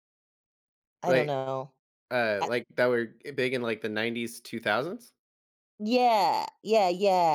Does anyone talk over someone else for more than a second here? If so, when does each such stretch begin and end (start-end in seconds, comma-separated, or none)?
none